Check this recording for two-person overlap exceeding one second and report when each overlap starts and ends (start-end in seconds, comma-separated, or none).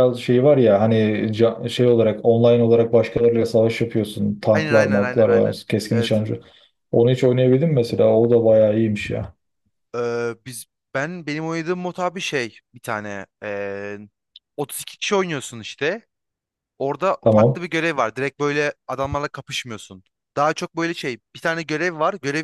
4.5-6.2